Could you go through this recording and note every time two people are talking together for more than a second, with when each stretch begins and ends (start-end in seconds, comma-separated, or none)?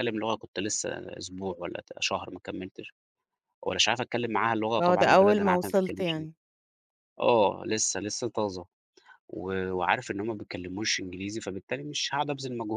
4.8-6.3